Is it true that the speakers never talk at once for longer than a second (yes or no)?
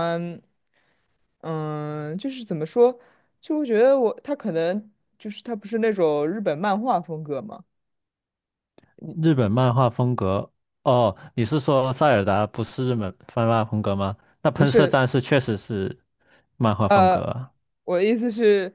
yes